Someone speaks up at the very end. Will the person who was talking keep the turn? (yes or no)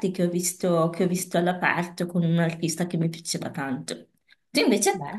yes